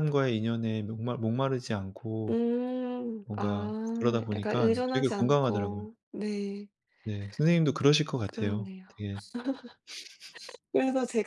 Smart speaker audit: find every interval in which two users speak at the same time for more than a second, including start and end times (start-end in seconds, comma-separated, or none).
3.2-5.8